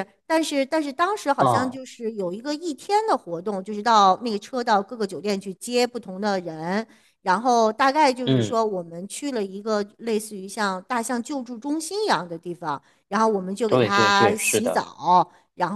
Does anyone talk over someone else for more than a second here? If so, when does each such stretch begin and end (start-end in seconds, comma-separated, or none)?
13.7-14.8